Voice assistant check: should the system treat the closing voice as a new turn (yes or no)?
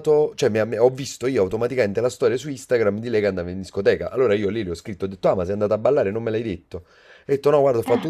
no